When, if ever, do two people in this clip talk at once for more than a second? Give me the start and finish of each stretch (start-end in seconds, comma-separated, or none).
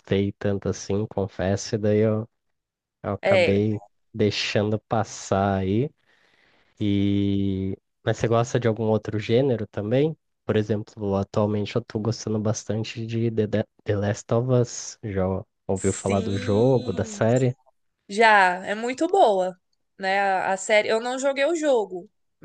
15.7-17.2